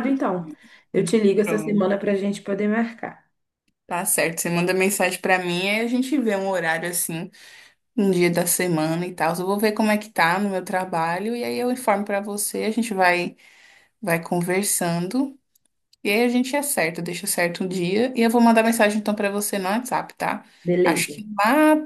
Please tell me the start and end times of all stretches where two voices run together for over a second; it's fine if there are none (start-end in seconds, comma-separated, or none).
none